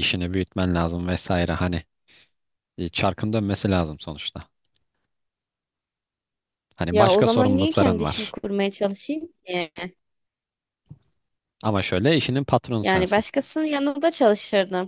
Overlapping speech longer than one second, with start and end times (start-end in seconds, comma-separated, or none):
6.9-8.4